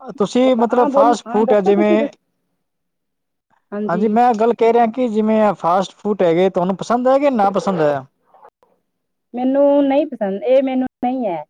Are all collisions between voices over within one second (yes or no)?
no